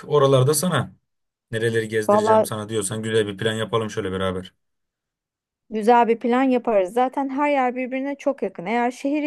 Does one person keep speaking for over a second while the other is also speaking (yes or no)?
no